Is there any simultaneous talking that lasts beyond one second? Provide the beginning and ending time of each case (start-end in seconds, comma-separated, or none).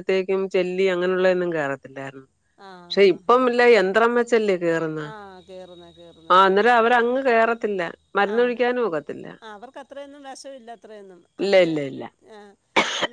none